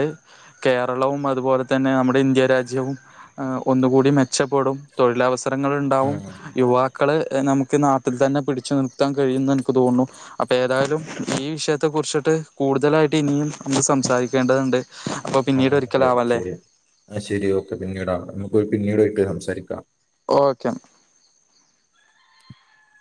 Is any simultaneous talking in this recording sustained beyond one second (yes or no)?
no